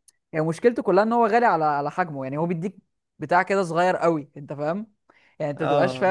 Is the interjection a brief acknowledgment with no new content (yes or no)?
yes